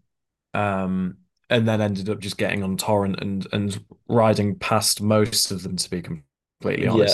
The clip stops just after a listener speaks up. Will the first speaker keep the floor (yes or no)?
no